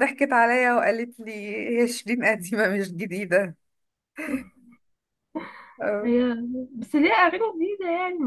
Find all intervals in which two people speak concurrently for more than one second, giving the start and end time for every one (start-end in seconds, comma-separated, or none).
none